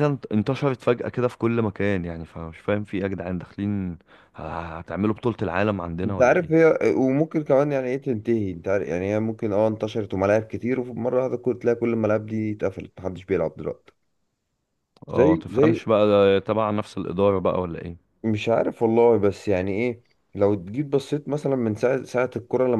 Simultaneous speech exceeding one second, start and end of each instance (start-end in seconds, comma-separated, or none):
none